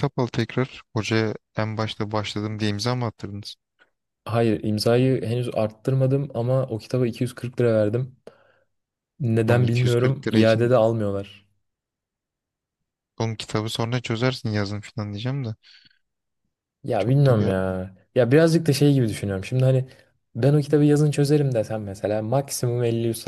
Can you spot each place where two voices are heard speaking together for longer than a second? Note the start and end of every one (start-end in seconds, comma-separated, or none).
9.5-10.7